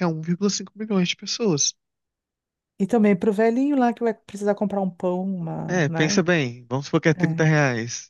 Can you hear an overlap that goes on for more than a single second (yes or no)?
no